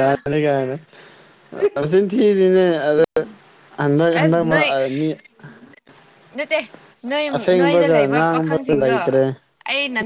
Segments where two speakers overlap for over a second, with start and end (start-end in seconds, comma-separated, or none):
7.4-9.0